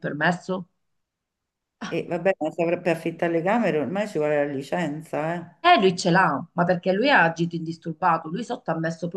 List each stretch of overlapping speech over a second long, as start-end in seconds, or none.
none